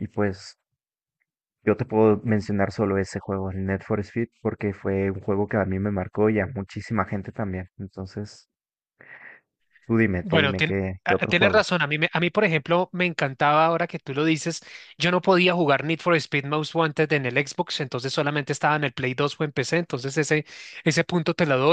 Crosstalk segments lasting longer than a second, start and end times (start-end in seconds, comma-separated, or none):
10.2-11.6